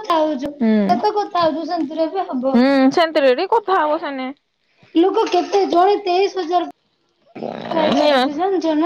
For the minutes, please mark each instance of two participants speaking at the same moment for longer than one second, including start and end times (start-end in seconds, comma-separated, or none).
none